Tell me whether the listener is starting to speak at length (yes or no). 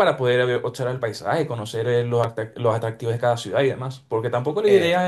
no